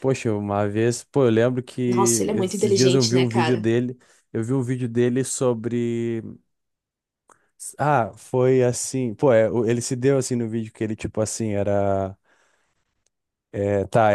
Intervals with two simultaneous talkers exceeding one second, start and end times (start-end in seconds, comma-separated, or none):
1.9-3.7